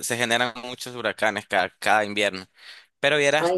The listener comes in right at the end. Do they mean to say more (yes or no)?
yes